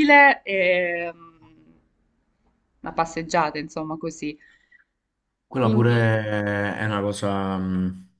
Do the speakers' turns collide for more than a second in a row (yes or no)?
no